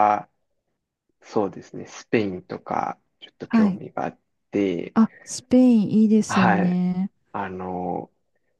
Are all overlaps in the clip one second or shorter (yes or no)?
yes